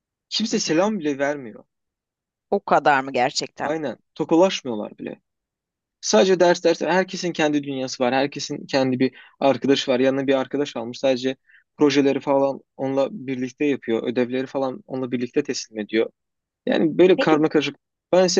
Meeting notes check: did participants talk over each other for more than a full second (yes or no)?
no